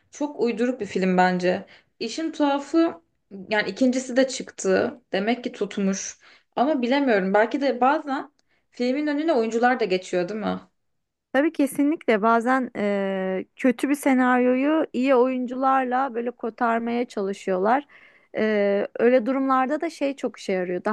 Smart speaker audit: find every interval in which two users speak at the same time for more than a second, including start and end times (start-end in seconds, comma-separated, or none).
none